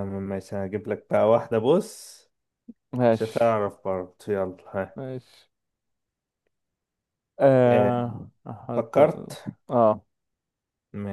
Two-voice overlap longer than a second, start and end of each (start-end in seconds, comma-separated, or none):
none